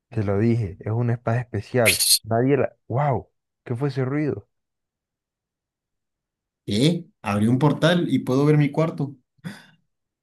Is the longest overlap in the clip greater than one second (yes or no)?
no